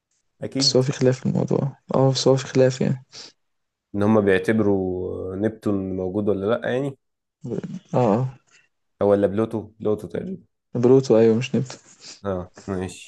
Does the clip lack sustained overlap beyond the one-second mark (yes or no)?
yes